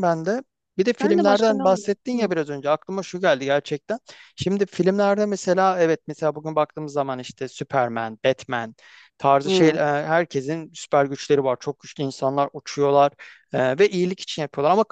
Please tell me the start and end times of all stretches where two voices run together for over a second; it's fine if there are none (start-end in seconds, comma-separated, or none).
1.0-2.3